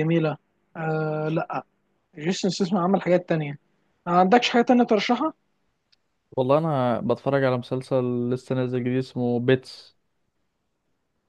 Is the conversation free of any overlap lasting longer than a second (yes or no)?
yes